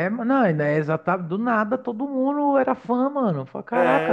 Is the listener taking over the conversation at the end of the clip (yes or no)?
yes